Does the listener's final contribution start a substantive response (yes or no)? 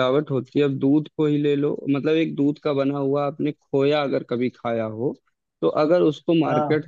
no